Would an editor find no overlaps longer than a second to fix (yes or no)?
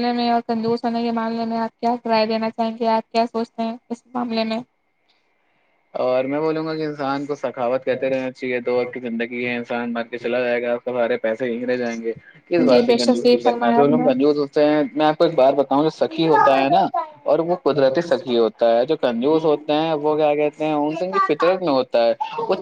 no